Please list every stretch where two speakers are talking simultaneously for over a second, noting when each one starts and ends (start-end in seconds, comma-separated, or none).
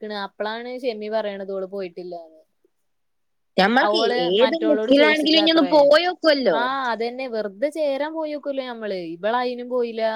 4.4-5.7